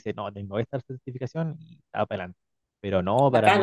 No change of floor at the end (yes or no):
no